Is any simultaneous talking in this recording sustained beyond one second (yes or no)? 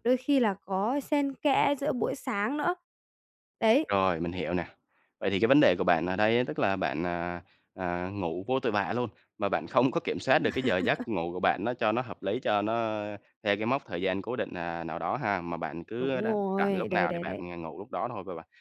yes